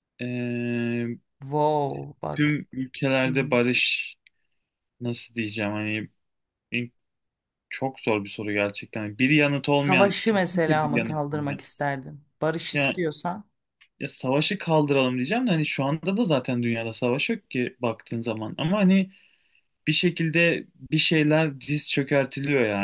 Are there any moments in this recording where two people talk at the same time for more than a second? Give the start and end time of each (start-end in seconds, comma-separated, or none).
9.8-11.6